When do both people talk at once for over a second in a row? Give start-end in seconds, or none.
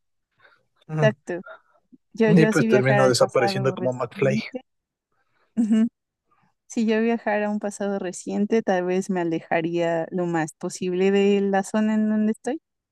2.2-4.4